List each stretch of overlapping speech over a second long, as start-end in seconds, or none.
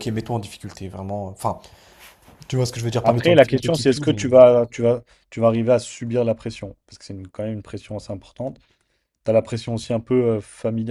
3.0-4.2